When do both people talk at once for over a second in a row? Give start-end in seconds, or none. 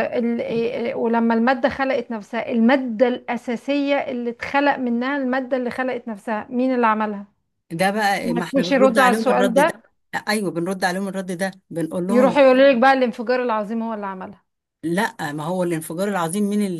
8.2-9.7